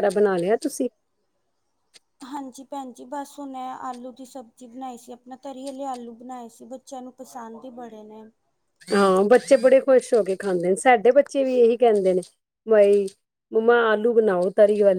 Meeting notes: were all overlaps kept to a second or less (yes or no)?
yes